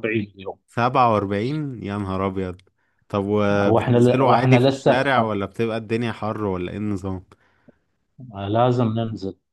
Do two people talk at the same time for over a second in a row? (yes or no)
yes